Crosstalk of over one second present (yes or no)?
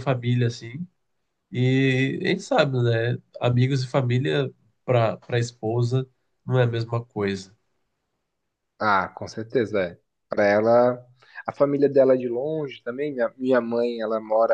no